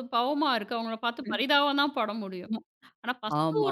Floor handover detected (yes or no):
no